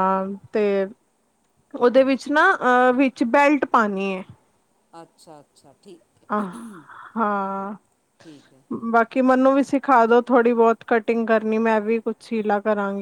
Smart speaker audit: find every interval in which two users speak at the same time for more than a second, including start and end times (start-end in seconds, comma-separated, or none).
none